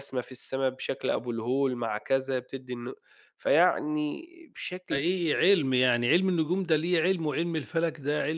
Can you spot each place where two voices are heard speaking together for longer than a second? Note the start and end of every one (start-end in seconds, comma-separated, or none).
none